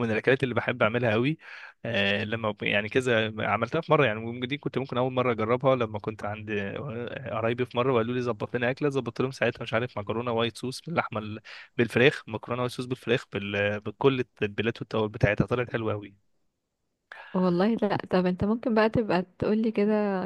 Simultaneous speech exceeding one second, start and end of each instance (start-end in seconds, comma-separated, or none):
none